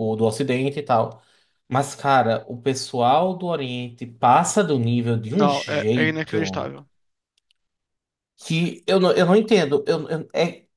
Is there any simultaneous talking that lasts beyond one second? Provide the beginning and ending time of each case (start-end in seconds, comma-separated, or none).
5.3-6.7